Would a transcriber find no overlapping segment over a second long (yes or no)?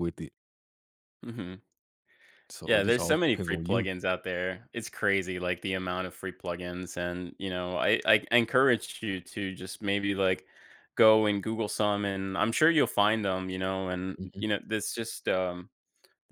no